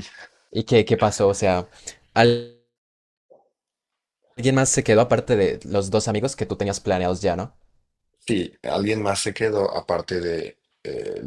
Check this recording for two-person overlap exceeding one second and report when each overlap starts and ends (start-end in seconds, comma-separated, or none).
none